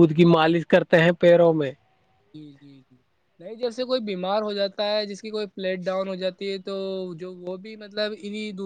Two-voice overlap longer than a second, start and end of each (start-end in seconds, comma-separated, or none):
none